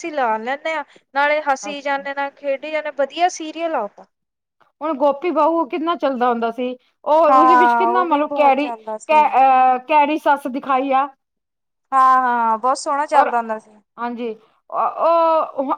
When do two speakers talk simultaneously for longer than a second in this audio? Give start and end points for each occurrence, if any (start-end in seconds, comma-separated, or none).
7.3-9.2